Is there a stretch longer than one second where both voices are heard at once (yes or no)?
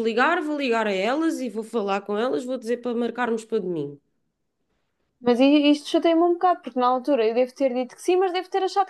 no